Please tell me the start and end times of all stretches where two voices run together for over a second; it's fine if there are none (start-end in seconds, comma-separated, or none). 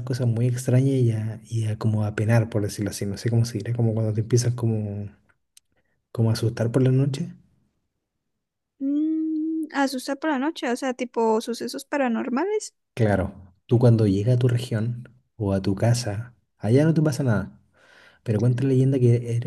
none